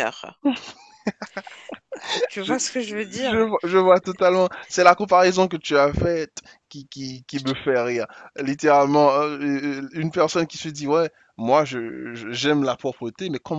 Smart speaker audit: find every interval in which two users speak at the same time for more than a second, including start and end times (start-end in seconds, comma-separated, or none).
none